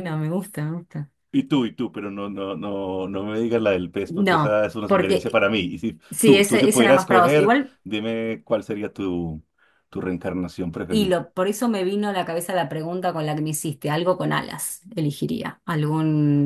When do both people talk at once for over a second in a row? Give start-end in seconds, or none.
4.0-5.4, 6.1-7.8